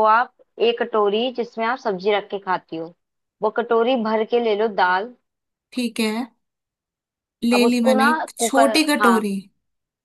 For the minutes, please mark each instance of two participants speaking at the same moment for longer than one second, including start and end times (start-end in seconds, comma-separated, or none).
7.5-9.2